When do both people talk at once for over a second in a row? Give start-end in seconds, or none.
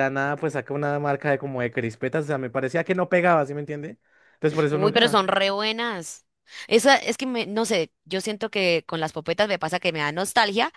none